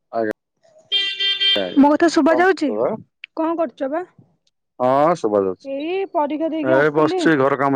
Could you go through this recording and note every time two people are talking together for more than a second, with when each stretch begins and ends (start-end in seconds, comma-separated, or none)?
5.7-7.2